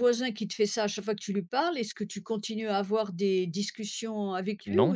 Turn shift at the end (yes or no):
no